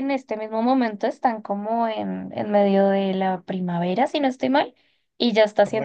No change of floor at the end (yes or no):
yes